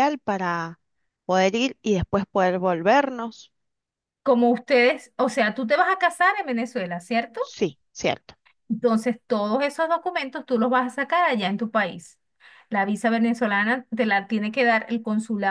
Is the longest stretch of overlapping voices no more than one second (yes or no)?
yes